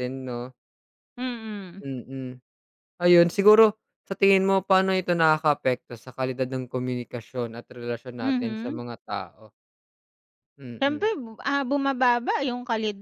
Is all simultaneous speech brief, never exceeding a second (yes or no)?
yes